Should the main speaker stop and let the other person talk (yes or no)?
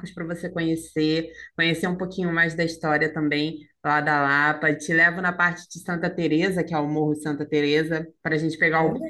yes